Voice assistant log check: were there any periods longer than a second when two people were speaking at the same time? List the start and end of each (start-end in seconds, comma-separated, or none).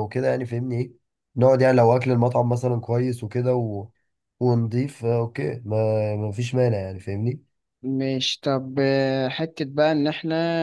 none